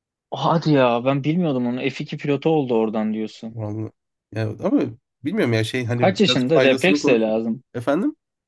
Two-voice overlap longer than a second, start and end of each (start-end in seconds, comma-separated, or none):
5.9-7.3